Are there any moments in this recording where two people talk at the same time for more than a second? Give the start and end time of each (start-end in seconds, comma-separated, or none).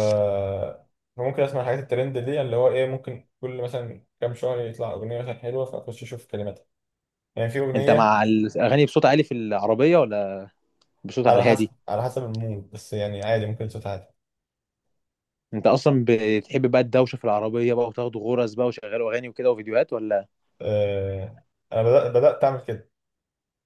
none